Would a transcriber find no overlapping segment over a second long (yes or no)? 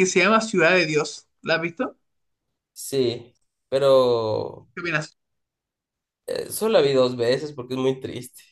yes